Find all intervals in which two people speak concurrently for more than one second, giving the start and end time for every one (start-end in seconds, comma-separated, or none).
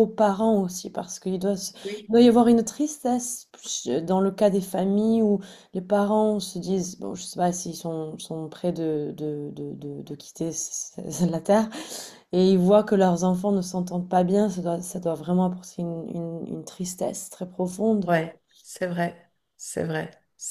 none